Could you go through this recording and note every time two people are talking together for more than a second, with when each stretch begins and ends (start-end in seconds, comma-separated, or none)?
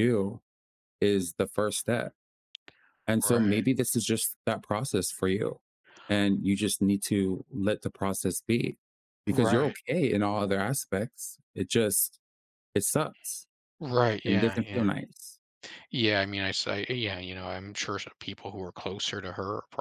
none